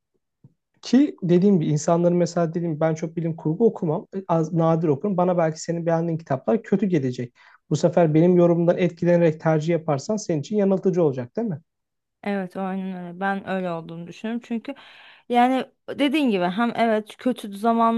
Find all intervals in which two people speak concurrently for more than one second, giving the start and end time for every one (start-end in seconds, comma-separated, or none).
none